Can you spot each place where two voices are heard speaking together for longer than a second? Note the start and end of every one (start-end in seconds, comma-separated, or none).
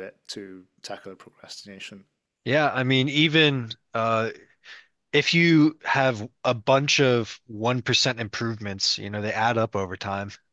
none